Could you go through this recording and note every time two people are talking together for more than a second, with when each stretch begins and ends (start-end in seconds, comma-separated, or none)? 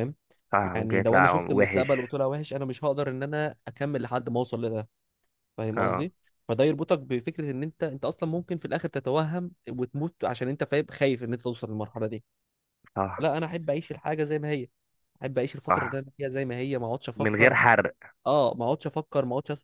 0.8-2.1